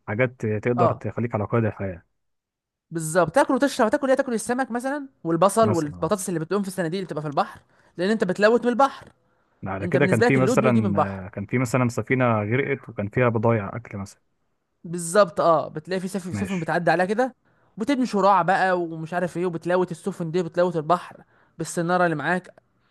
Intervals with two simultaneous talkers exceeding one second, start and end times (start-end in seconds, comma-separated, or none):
9.8-11.2